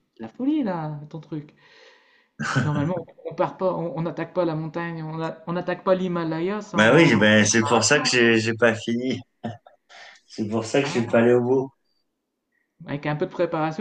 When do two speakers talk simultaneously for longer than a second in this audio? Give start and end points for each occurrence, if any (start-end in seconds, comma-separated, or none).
6.7-8.1